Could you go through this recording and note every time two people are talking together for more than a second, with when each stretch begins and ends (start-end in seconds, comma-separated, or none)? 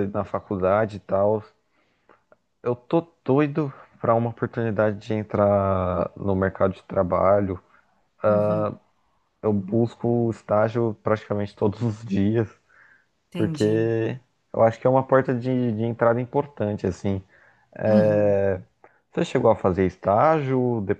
none